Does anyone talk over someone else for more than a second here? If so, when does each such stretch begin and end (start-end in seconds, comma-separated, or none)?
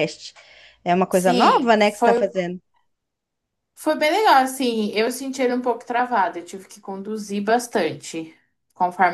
1.1-2.3